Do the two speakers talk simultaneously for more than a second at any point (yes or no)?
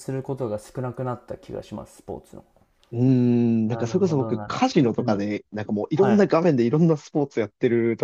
yes